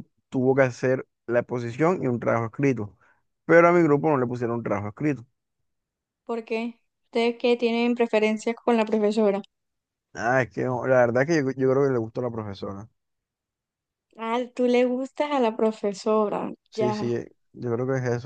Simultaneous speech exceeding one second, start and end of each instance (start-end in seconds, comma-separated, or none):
none